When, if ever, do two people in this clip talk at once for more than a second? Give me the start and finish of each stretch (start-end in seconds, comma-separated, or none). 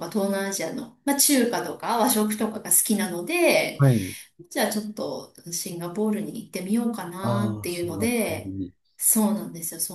7.2-8.5